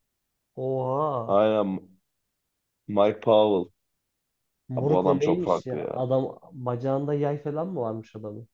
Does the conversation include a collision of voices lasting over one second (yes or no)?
yes